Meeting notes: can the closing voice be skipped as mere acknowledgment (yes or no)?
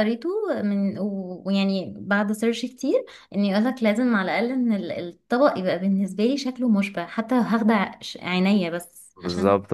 no